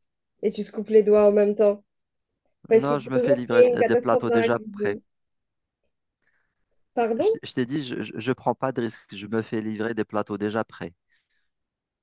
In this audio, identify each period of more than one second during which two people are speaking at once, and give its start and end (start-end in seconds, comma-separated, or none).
2.7-5.0